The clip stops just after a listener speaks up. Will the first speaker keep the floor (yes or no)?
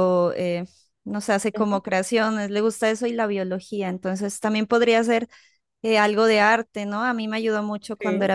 yes